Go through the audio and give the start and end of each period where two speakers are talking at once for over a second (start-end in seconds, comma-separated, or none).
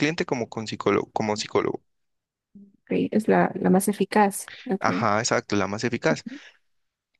none